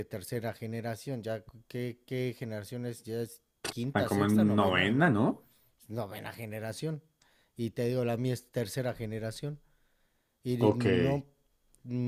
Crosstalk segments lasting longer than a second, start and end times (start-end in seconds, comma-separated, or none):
3.7-5.2